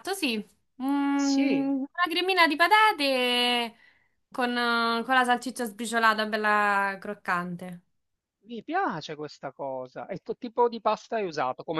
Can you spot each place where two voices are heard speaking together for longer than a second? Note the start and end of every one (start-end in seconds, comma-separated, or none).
none